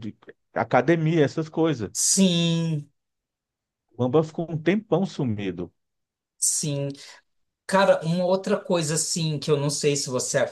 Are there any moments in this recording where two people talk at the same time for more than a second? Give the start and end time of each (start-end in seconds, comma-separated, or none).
none